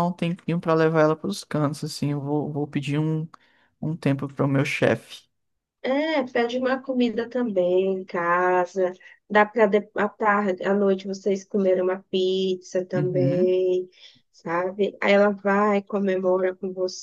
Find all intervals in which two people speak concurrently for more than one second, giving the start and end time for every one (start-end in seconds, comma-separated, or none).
none